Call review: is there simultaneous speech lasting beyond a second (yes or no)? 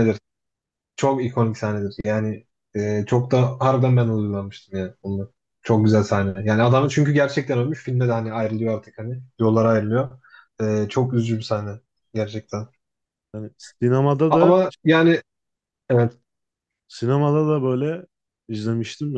no